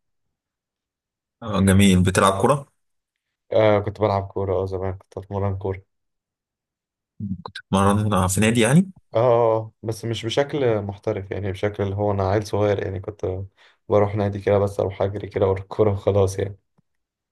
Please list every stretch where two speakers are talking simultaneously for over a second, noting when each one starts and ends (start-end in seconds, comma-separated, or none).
none